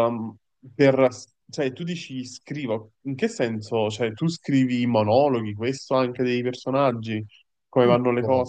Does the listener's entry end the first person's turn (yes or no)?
yes